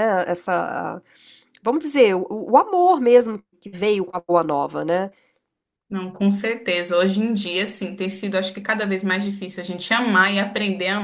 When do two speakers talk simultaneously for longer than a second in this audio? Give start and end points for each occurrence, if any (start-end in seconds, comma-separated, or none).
none